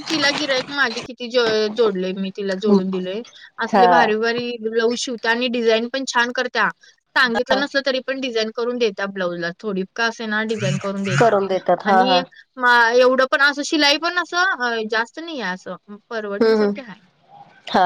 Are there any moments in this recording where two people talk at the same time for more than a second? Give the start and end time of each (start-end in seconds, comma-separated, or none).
none